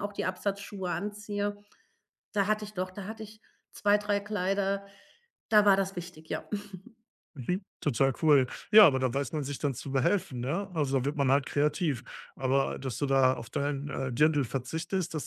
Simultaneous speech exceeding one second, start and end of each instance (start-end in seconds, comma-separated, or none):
none